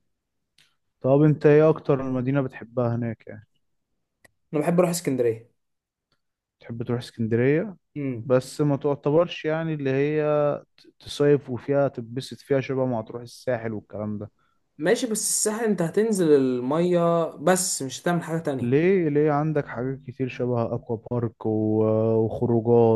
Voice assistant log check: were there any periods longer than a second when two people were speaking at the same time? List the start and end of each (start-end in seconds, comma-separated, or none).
none